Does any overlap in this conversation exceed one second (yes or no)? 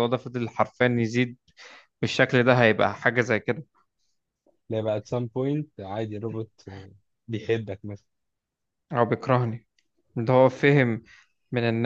no